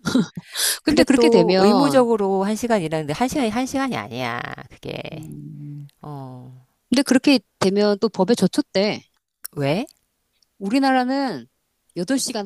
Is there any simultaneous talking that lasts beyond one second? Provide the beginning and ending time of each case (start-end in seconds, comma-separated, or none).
0.8-2.1